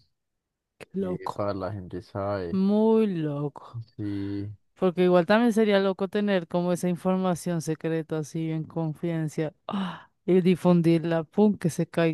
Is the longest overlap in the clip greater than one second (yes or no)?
no